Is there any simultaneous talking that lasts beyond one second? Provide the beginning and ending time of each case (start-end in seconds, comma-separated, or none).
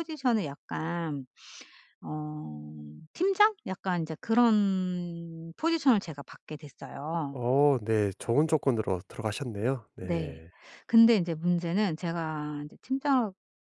none